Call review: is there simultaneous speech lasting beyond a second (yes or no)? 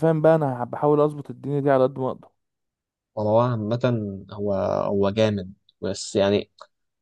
no